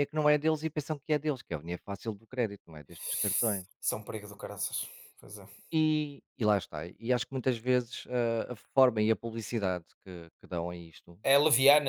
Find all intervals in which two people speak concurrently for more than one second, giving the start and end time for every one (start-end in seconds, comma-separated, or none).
none